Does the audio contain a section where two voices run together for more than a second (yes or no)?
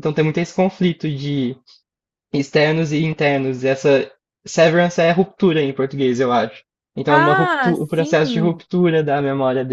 yes